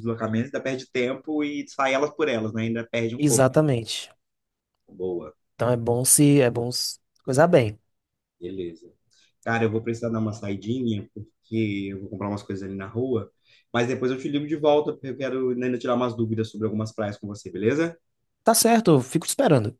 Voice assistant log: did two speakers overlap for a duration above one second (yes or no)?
no